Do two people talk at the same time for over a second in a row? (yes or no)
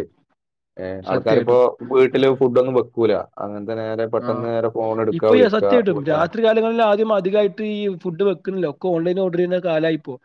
no